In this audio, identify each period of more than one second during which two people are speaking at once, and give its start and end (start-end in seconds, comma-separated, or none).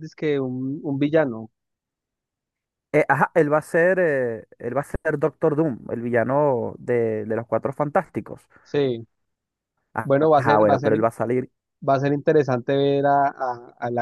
none